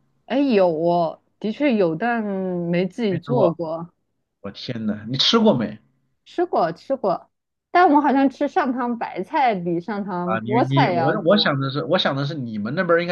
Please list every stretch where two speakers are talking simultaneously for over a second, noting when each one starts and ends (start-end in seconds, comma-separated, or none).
10.2-11.6